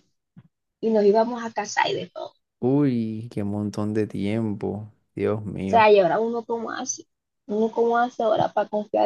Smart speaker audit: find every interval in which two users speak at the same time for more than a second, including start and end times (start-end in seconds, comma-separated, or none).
none